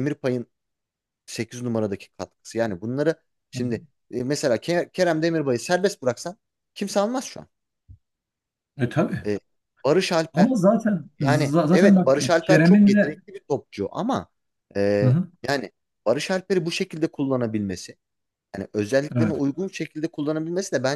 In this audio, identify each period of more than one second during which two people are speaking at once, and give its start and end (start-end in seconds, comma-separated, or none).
11.2-13.2